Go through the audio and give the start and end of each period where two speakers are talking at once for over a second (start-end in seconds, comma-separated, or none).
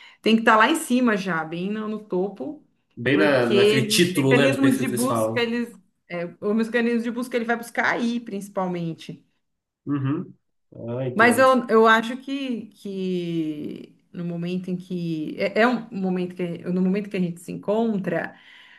3.1-5.5